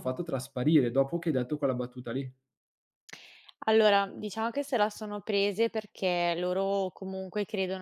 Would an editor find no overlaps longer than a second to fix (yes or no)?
yes